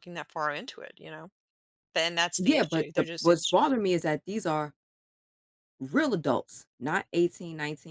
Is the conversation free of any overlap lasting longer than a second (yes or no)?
no